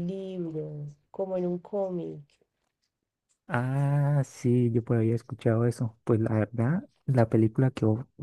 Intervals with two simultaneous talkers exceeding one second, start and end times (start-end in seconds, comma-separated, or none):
none